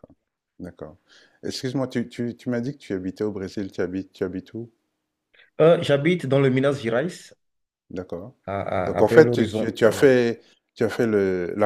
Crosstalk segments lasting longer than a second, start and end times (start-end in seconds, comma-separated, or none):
8.8-10.1